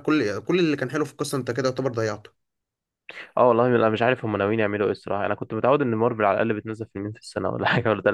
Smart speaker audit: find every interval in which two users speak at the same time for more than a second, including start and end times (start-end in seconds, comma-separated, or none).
none